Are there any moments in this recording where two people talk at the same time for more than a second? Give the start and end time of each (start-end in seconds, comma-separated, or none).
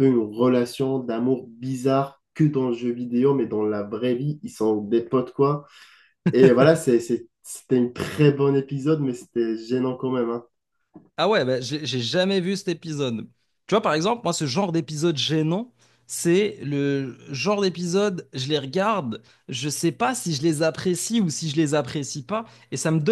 none